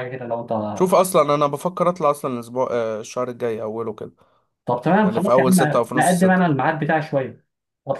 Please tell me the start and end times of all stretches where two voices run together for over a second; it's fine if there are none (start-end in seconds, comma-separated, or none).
5.0-6.4